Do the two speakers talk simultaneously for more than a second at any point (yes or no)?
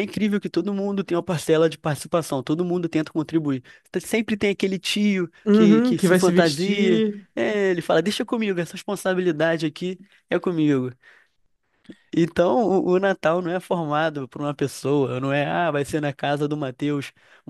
yes